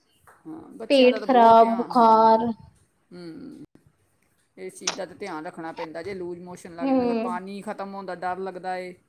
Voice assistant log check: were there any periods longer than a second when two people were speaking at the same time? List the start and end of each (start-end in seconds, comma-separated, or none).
0.9-2.4